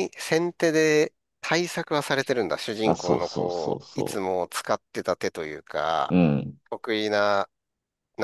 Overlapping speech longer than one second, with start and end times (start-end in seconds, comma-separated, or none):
2.9-4.2